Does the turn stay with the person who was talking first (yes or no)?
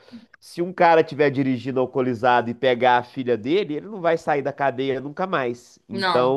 yes